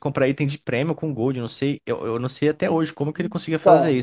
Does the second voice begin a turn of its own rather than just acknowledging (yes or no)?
yes